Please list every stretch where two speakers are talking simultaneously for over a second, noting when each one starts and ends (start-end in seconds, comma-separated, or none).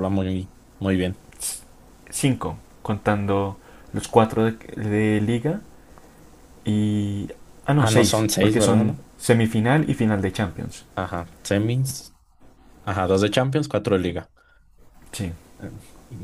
7.8-9.0